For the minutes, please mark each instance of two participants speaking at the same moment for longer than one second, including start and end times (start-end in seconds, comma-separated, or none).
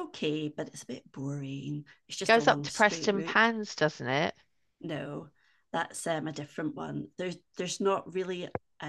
2.2-3.5